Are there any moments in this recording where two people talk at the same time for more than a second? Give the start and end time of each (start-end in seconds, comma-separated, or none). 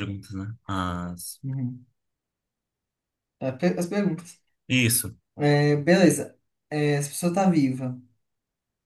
none